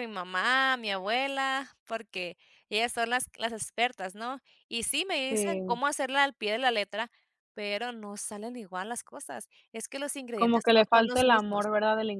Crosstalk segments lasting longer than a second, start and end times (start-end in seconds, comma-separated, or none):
10.3-11.7